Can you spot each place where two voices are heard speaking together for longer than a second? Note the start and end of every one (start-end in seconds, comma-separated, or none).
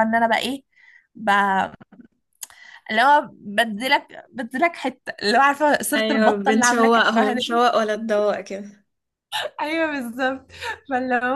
6.0-7.3